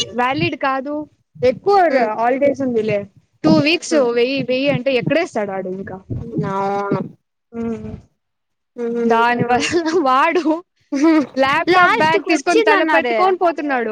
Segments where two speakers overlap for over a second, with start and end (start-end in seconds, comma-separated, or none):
11.7-13.2